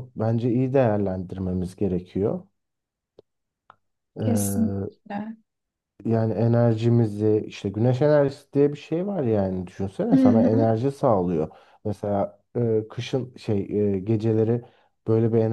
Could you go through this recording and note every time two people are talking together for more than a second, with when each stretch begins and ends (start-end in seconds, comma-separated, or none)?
none